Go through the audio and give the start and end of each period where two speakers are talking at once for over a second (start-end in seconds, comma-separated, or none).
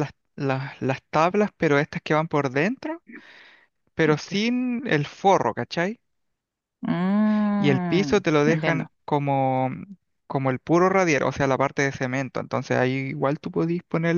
7.6-8.9